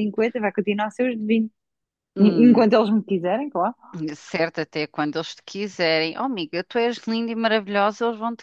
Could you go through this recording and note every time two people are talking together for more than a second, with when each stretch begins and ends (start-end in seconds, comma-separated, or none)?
none